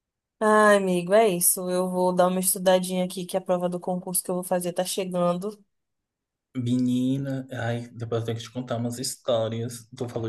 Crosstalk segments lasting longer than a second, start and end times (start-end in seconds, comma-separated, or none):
none